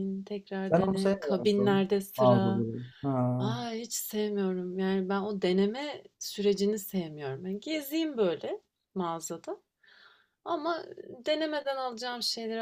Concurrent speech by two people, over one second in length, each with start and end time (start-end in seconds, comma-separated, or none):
0.7-2.7